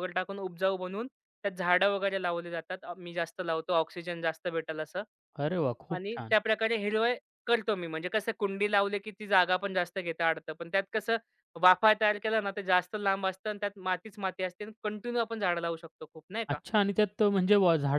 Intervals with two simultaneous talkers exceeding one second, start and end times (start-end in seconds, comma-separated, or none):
none